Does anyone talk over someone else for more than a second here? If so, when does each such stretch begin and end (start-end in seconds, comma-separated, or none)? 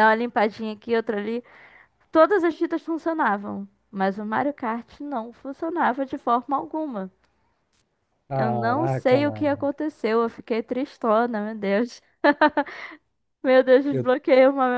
8.3-9.7